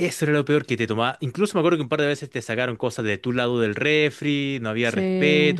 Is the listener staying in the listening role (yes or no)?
yes